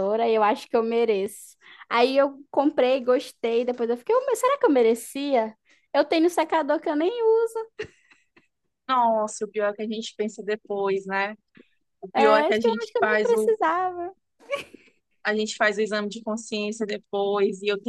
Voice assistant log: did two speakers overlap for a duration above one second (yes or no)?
yes